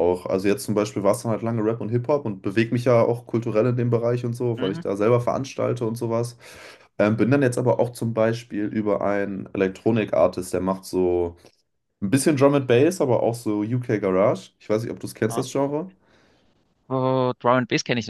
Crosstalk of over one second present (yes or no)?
no